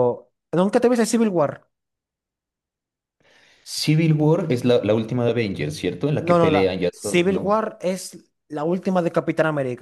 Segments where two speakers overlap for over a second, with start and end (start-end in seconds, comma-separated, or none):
6.2-7.6